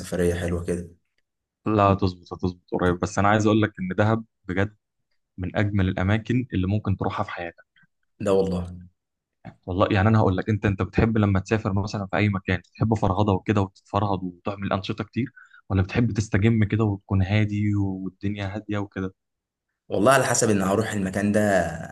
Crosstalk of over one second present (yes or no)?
no